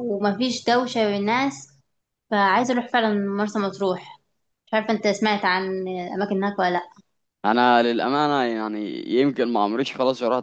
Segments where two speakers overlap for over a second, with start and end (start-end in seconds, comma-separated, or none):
none